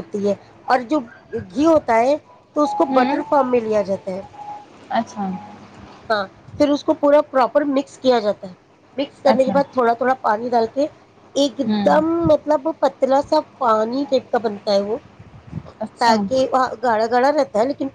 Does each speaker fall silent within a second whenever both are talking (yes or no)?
yes